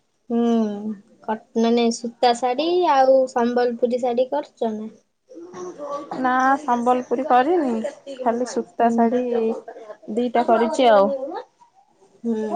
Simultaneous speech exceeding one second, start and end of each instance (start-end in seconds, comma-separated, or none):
none